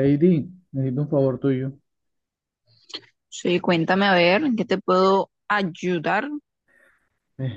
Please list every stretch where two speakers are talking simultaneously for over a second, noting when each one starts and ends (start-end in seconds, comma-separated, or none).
none